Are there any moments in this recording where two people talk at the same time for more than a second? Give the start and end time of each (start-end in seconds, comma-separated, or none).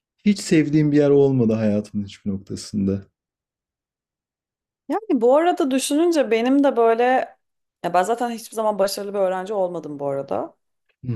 none